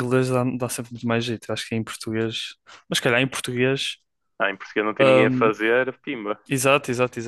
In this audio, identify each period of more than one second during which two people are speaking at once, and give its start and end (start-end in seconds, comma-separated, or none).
none